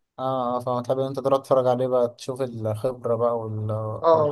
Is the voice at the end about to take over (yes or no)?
yes